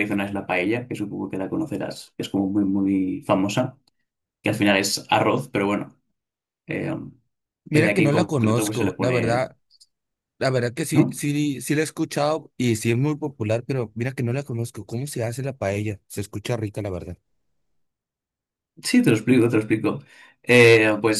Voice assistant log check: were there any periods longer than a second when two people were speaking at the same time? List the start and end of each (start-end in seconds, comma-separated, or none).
7.7-9.5